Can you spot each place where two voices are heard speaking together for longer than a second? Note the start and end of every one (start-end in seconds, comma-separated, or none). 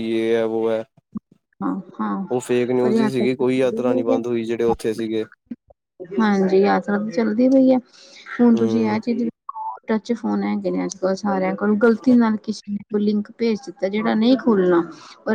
2.8-4.2